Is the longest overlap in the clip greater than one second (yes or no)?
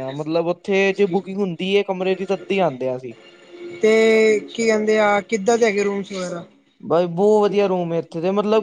no